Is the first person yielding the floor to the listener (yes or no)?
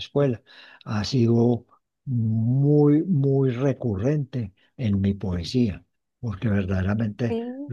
no